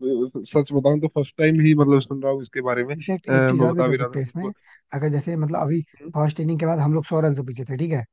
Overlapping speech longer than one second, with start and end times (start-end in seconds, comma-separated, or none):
2.9-4.5